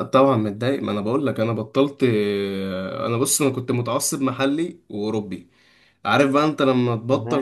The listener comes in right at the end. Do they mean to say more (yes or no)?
no